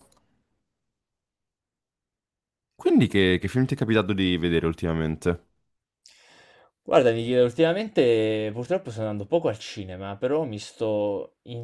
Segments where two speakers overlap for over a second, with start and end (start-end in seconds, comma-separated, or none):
none